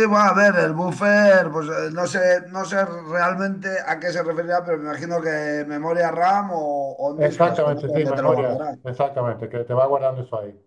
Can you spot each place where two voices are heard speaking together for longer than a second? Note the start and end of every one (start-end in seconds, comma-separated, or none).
7.2-8.8